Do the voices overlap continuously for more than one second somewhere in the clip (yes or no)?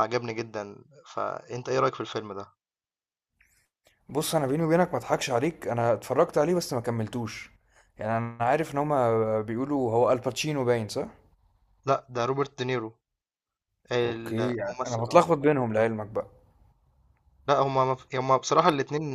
yes